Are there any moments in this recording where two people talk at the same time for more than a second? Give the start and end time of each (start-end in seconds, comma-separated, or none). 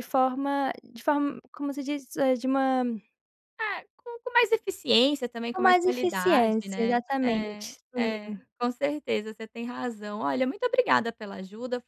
5.5-8.1